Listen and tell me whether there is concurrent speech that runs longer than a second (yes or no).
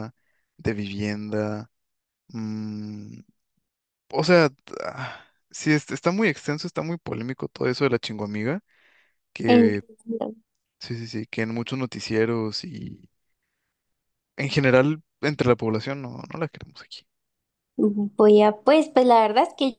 no